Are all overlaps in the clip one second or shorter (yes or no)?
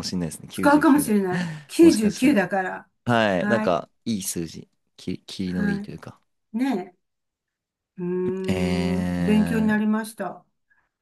no